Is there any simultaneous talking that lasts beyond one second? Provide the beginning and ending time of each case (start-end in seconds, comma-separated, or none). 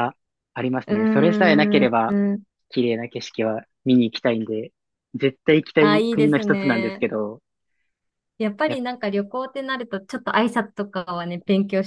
0.9-2.2, 5.8-7.0